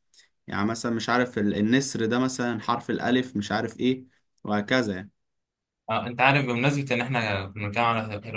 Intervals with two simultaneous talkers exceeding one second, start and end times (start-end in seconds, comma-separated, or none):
none